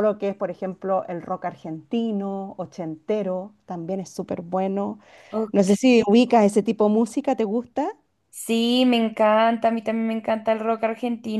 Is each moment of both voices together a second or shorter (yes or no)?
yes